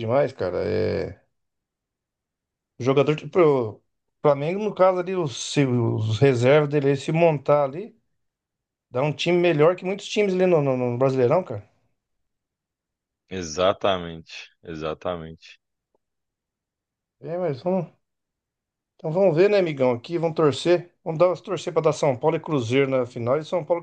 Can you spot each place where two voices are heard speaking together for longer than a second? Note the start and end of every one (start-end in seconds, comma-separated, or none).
none